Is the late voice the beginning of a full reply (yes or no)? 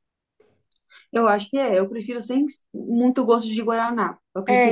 yes